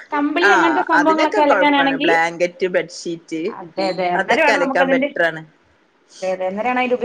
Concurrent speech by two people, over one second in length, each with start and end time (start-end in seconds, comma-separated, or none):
0.5-2.1